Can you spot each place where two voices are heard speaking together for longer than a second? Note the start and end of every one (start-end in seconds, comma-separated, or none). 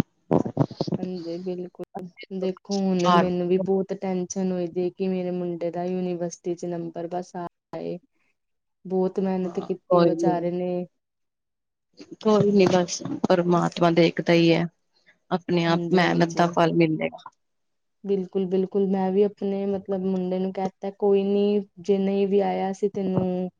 none